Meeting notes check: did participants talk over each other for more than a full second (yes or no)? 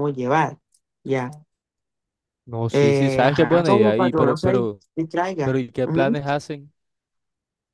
yes